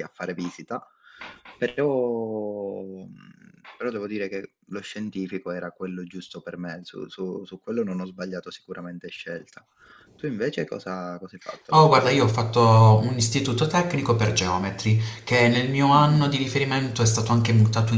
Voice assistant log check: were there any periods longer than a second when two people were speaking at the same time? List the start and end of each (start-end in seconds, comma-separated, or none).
none